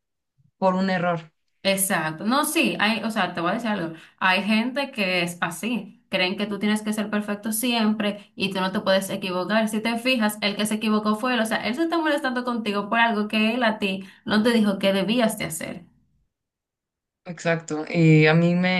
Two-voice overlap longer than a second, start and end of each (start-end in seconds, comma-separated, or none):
none